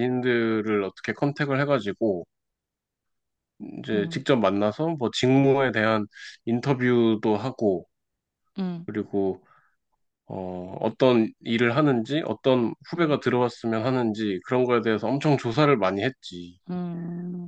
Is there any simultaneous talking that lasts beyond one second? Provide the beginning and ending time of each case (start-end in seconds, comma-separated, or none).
none